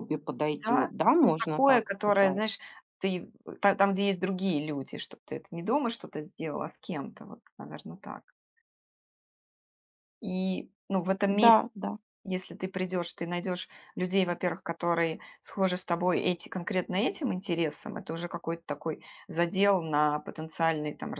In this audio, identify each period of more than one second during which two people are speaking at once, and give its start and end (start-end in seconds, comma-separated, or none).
0.5-2.4